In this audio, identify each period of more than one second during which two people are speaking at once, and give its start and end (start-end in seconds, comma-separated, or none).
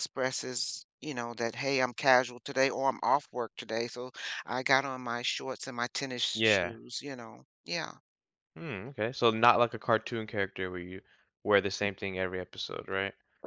none